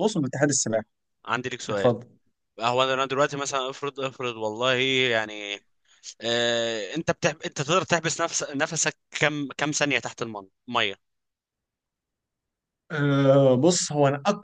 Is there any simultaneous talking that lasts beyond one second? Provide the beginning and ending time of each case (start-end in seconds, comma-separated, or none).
none